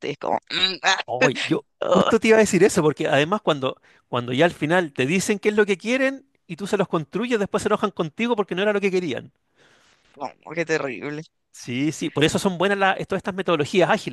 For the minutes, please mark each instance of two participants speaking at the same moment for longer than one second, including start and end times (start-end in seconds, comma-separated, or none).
none